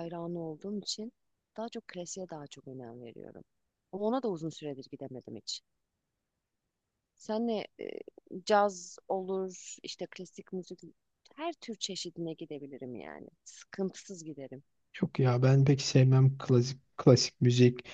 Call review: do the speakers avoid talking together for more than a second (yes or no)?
yes